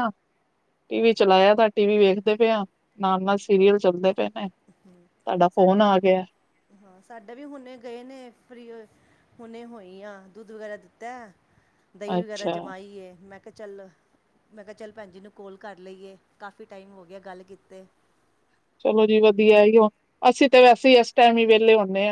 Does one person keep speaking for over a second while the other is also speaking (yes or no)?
no